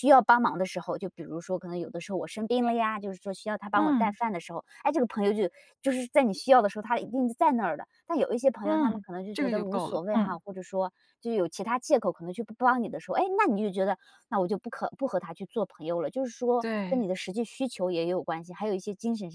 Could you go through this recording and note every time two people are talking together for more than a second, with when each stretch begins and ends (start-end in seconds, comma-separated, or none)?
8.6-10.4